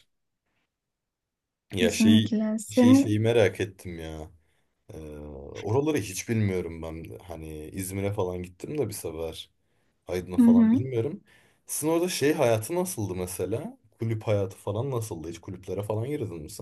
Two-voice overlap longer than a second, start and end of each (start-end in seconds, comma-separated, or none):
1.8-3.2